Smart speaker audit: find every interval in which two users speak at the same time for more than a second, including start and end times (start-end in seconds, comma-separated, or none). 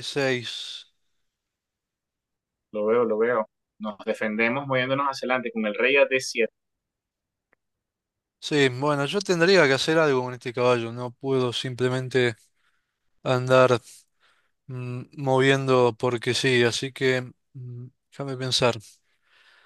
none